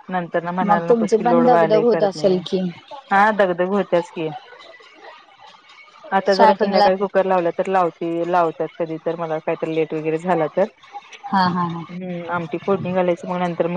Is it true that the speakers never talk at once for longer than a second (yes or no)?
no